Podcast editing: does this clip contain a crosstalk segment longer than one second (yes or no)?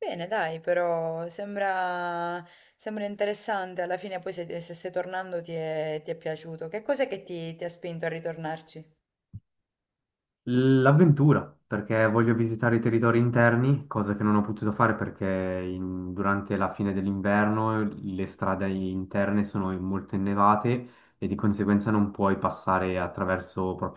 no